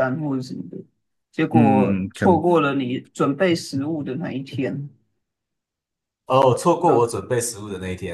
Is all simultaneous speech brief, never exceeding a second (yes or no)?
yes